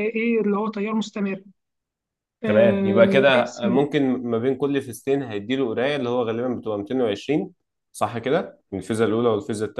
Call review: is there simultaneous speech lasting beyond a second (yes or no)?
no